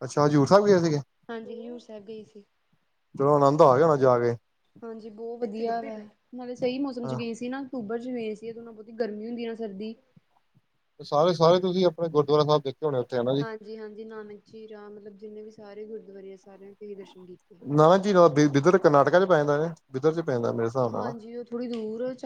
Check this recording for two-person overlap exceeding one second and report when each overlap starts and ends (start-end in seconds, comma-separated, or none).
none